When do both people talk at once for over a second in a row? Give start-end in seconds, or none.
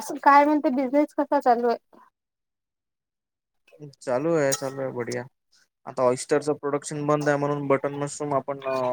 none